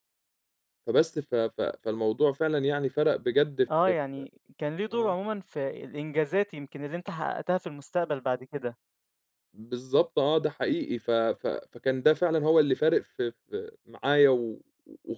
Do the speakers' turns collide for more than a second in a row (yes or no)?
no